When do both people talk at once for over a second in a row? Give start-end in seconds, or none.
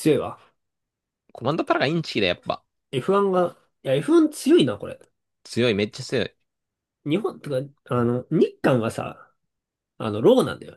none